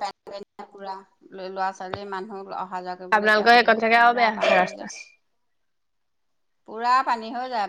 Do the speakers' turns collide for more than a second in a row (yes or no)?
yes